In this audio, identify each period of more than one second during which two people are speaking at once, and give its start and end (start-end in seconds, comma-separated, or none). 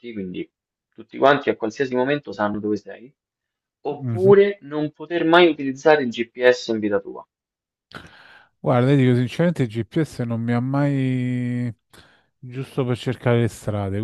none